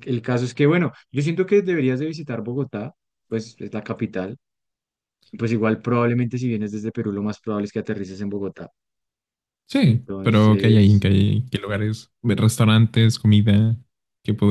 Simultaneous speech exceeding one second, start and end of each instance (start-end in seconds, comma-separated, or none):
9.8-11.1